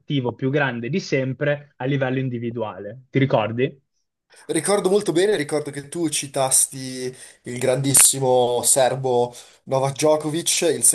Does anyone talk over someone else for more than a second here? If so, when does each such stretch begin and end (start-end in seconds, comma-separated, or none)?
none